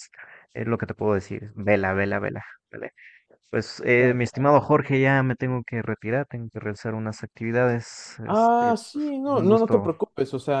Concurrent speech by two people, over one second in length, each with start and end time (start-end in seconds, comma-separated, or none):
8.2-9.9